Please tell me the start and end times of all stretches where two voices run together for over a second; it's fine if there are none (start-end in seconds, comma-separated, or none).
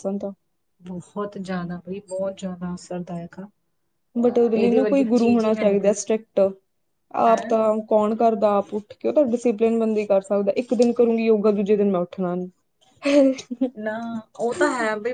4.5-5.9